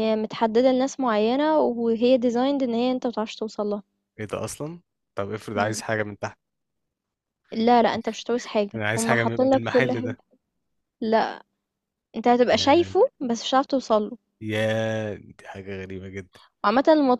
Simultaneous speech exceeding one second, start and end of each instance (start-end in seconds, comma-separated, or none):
8.8-10.2